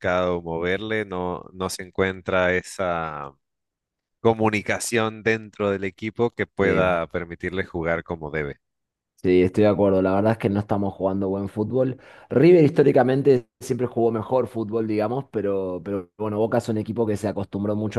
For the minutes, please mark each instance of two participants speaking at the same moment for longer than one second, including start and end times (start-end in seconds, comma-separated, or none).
none